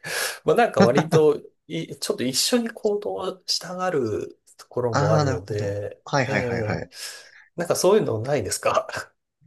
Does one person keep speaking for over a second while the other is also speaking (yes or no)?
yes